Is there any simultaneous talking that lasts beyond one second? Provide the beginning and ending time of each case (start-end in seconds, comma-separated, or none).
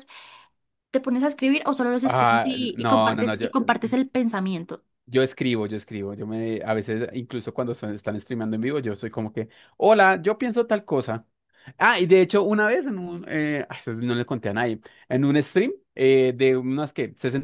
2.1-3.5